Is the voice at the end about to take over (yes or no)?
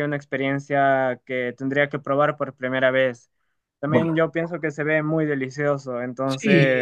yes